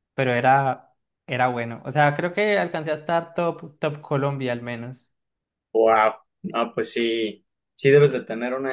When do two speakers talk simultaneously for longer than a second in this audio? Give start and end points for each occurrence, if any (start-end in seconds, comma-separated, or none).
none